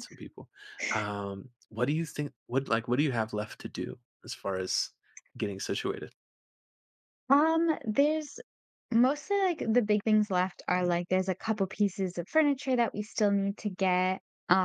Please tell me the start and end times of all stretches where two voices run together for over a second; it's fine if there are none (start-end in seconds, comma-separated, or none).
none